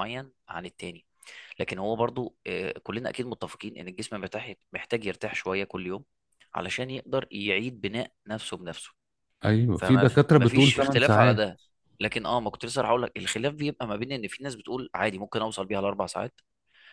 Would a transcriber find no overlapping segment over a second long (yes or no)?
no